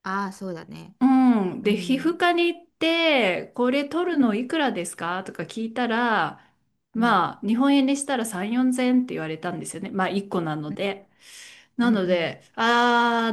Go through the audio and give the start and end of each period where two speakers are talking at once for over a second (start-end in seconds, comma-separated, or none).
none